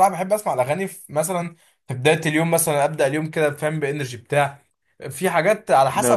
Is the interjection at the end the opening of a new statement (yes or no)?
no